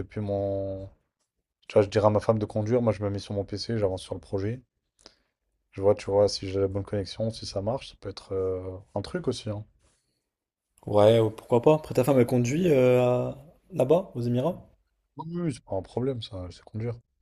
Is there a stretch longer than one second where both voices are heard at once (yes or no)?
no